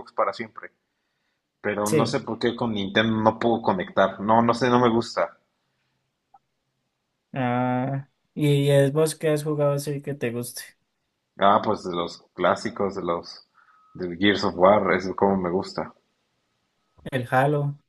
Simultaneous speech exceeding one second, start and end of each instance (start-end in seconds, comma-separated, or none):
none